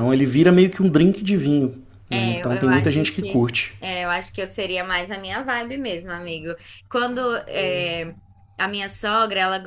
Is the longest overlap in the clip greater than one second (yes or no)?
yes